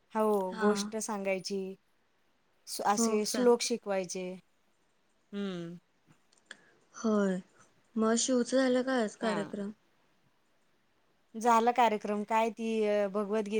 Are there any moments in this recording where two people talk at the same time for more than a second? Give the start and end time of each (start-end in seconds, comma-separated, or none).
none